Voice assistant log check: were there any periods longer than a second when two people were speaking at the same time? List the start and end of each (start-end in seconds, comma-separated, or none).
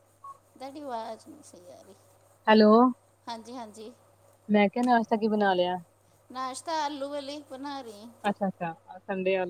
none